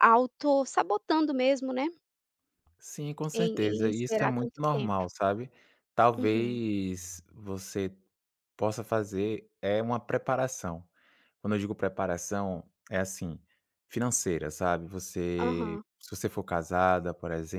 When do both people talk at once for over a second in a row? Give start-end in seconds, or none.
3.3-5.0